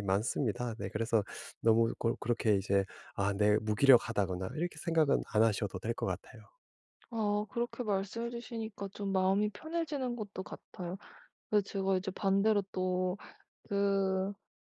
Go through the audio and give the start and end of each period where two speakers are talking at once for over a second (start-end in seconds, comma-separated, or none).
none